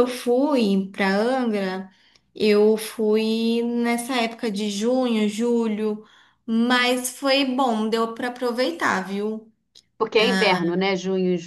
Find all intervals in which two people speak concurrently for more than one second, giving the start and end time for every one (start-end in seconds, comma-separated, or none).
none